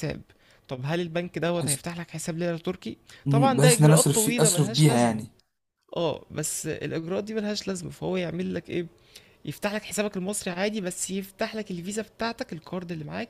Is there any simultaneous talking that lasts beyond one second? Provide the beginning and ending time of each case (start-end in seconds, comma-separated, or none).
3.2-5.2